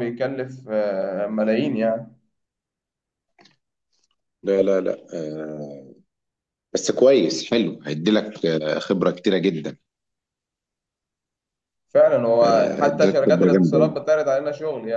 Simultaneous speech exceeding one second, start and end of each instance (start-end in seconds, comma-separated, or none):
12.4-13.8